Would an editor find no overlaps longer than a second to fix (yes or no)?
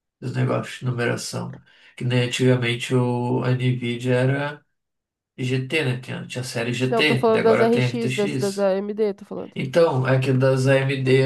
no